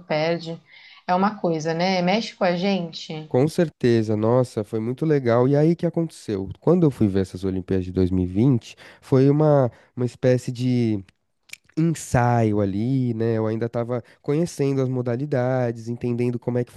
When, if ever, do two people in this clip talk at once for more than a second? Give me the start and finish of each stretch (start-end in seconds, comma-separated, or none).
none